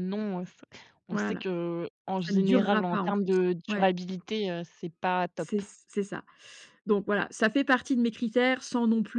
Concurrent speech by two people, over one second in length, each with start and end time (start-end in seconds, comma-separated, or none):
2.2-3.9